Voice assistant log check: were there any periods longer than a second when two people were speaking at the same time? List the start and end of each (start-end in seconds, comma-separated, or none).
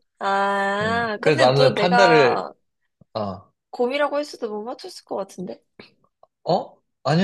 0.8-2.4